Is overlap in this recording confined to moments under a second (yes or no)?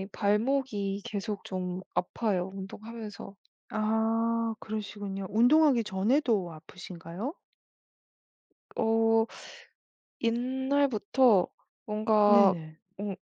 yes